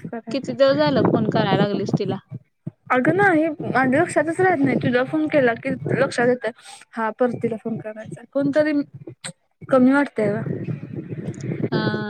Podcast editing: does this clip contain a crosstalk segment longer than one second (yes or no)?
no